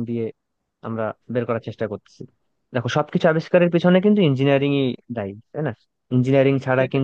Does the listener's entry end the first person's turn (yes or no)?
no